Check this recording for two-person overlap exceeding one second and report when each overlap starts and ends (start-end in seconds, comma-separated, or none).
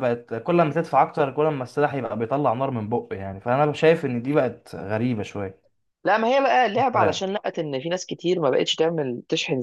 none